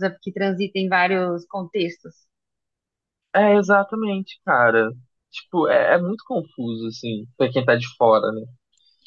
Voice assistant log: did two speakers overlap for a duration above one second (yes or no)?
no